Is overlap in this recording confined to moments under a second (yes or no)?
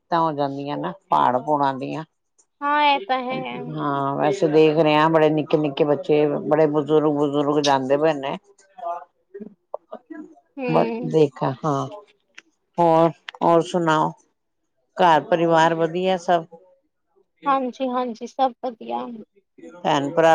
yes